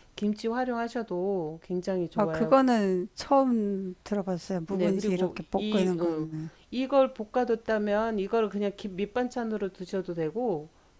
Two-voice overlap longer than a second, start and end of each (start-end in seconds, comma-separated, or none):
4.7-6.3